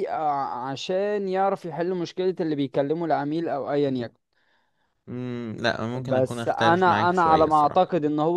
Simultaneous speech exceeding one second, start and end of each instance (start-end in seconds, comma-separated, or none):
6.0-7.9